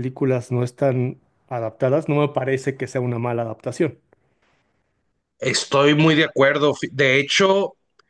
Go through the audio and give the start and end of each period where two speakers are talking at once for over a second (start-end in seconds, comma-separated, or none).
none